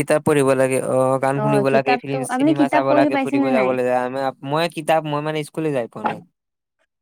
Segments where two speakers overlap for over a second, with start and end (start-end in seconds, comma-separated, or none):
1.7-3.7